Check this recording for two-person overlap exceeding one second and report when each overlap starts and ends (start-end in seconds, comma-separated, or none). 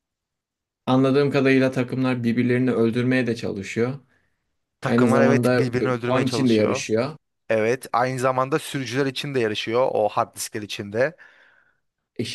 4.8-6.8